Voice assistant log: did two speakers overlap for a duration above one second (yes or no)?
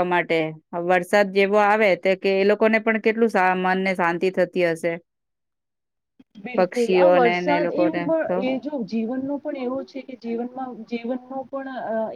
yes